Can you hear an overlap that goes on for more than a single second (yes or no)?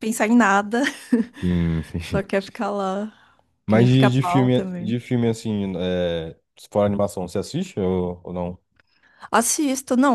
yes